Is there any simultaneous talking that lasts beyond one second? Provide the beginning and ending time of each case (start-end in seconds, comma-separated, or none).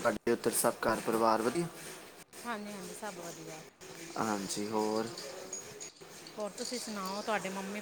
none